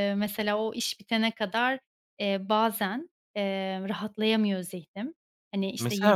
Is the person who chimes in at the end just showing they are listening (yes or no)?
no